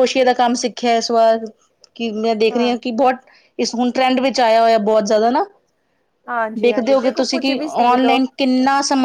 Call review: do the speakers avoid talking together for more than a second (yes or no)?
no